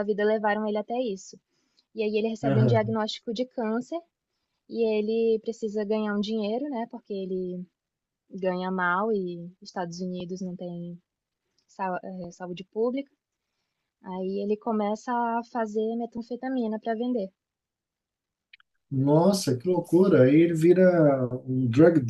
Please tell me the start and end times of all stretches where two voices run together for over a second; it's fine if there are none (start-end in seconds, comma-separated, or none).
none